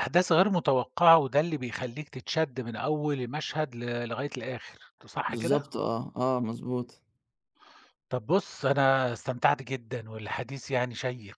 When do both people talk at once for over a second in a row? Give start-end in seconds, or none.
none